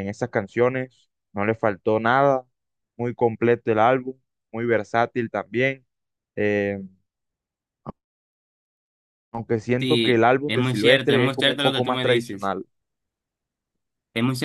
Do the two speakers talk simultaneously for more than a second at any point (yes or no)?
yes